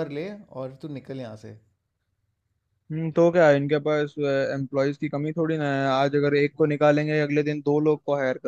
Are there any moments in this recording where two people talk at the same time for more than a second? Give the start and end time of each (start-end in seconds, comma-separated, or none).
none